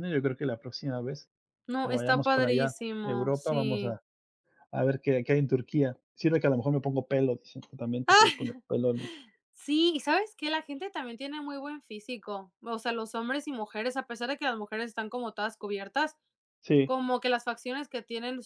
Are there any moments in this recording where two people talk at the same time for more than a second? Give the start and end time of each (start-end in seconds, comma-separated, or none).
1.8-4.0